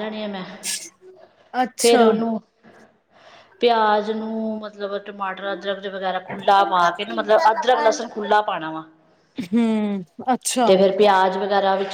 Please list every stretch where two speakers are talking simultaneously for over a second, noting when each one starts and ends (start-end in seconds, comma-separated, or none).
6.4-8.4